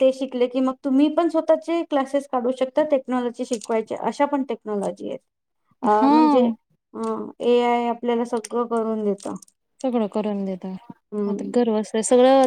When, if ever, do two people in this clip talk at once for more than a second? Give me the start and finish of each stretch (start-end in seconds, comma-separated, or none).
none